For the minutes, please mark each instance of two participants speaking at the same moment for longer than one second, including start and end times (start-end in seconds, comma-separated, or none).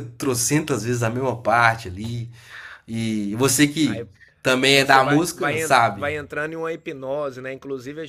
4.7-6.1